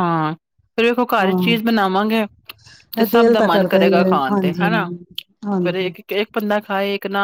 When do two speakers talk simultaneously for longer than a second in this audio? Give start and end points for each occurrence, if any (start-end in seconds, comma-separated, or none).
3.0-4.7